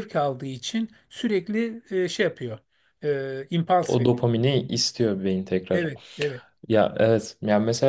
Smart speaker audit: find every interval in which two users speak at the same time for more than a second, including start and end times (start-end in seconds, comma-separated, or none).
none